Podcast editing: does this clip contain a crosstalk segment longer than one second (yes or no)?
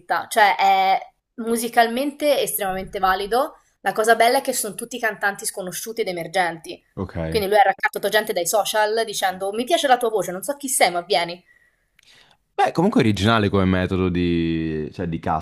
no